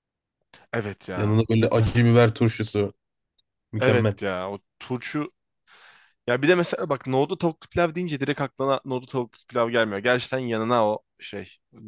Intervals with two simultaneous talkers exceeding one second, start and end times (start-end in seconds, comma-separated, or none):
none